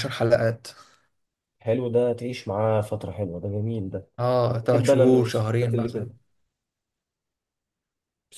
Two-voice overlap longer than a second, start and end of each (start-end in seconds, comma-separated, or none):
4.7-6.1